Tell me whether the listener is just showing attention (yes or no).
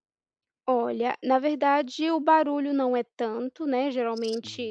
yes